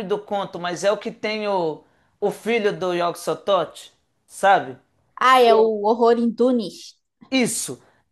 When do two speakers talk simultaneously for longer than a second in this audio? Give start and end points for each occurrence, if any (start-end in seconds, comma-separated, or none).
none